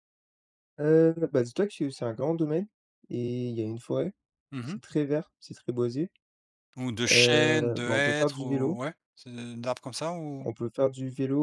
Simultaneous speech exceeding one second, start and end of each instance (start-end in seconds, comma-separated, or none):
7.1-8.8